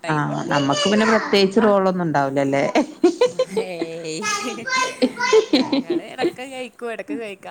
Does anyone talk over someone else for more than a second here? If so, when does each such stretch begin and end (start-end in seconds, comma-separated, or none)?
none